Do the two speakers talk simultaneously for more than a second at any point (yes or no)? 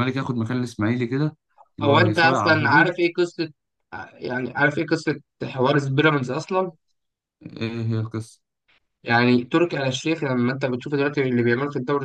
yes